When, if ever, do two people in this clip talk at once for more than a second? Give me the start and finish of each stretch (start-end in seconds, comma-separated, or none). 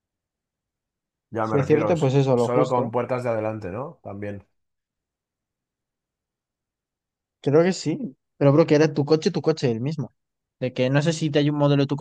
1.4-2.9